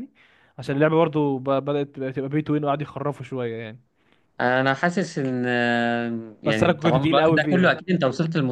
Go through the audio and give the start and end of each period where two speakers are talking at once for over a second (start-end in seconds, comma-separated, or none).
6.5-7.8